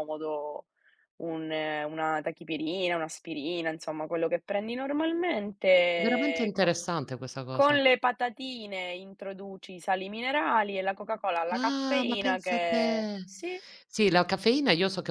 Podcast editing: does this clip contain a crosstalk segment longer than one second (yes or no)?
yes